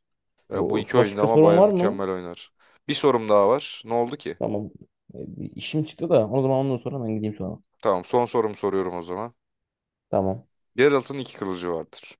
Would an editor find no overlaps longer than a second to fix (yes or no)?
no